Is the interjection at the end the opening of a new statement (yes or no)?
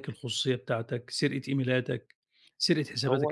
no